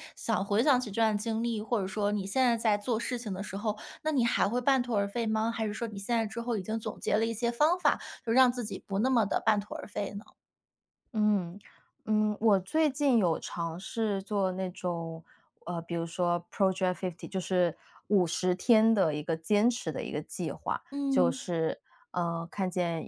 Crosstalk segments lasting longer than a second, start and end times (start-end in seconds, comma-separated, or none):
none